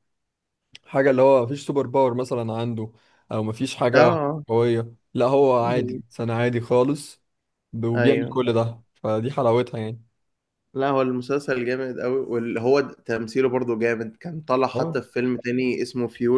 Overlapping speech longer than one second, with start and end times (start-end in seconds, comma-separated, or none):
none